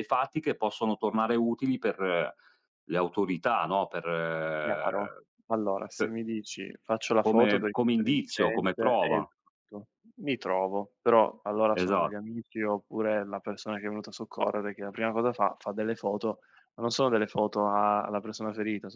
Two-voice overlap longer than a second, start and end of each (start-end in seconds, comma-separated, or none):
7.2-9.3